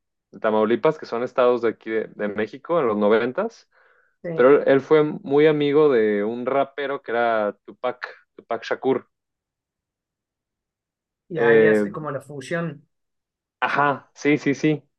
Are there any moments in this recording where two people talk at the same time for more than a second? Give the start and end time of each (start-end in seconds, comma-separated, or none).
none